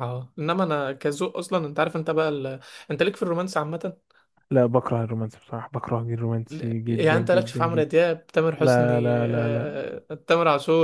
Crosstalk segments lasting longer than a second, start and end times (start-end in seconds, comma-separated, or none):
6.5-7.9, 8.6-9.8